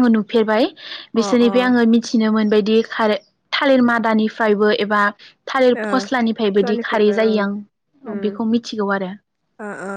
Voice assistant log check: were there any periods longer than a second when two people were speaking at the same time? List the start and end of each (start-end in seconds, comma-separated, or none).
5.8-7.4